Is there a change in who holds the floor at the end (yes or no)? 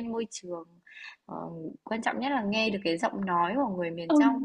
no